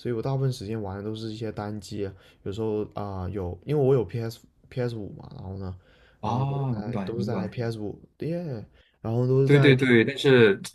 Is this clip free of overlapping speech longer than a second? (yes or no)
no